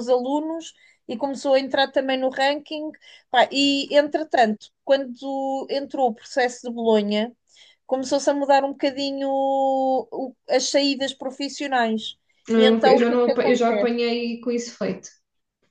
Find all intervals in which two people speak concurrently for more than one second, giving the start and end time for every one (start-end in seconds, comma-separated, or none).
12.6-13.9